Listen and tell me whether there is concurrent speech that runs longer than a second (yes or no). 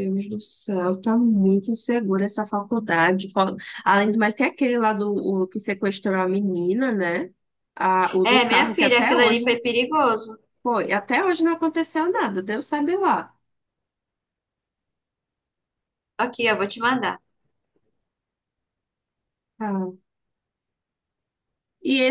yes